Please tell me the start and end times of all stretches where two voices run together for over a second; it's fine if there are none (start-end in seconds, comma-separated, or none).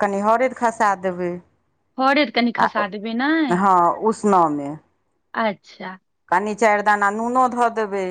none